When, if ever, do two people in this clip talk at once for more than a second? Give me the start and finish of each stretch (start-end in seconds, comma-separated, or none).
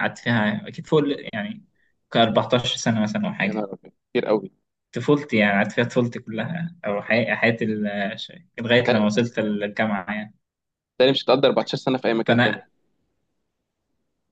none